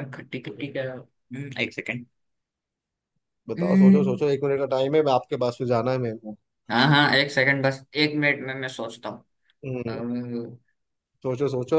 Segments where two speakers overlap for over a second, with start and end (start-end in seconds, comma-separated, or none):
none